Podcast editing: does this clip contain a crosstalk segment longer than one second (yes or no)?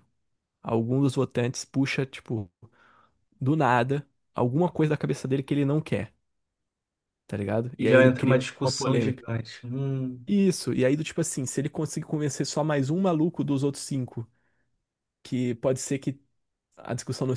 yes